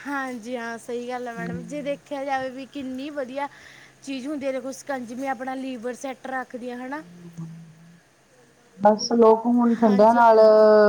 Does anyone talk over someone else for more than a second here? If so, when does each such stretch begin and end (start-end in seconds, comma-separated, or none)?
none